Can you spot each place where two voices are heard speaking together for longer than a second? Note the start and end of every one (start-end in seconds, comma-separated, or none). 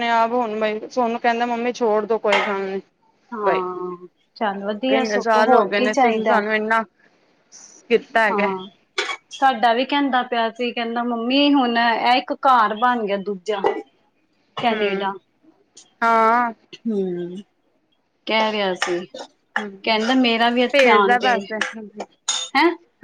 5.0-6.4